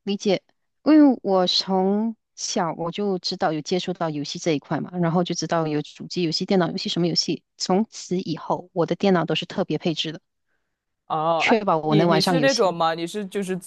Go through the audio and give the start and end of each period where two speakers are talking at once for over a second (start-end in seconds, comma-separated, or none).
11.4-12.8